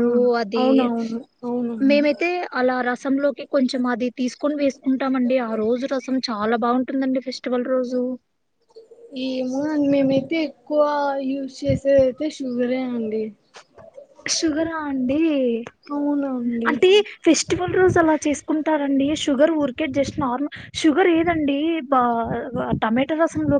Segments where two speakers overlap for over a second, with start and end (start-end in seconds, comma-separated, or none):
none